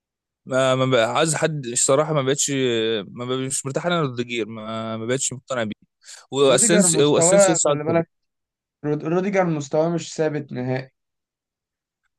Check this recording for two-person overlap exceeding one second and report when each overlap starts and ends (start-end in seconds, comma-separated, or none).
6.5-8.0